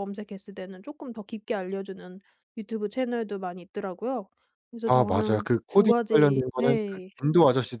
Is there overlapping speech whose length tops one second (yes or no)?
yes